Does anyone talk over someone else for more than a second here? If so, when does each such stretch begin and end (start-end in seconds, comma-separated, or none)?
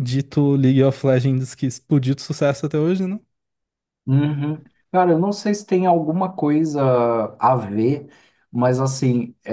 none